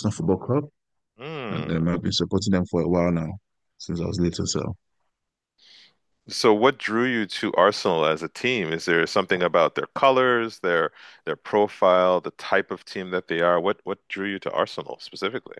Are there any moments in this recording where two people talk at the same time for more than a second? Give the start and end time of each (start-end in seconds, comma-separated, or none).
none